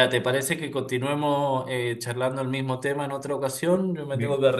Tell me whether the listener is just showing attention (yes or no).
yes